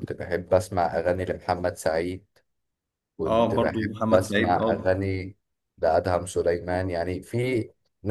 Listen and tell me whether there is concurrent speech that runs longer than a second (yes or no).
yes